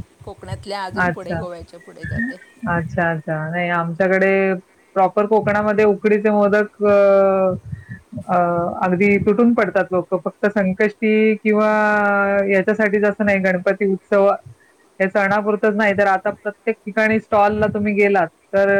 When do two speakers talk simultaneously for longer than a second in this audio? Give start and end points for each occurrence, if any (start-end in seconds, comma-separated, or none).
none